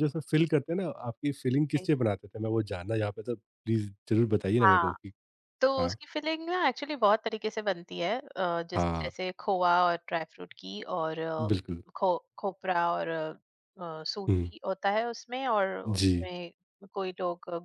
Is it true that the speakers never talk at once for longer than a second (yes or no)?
yes